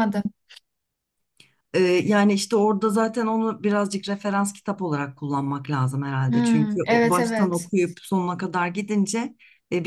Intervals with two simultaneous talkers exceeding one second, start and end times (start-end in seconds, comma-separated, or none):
6.3-7.7